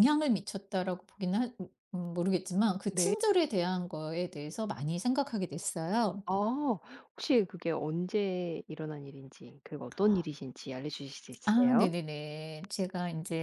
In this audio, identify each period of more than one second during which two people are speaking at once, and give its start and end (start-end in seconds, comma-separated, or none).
none